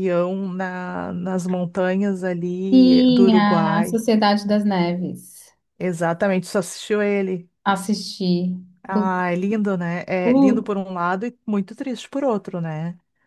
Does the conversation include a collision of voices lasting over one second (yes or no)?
yes